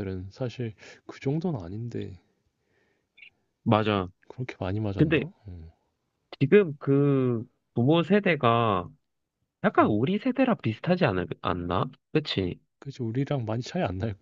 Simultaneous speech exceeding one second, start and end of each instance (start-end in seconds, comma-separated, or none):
none